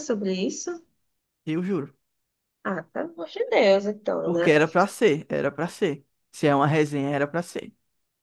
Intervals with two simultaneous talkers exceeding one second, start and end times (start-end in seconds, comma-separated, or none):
none